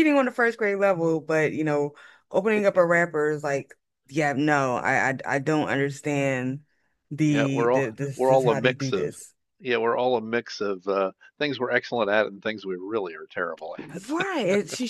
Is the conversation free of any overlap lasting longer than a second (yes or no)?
no